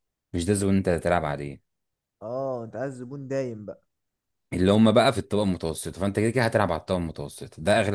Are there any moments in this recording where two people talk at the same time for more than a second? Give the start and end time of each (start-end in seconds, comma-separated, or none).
none